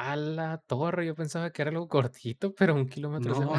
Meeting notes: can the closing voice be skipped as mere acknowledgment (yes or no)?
no